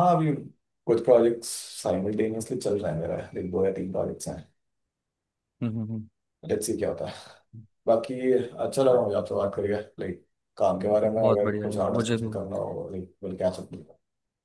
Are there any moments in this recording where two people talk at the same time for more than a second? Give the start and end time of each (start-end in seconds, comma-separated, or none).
10.8-12.3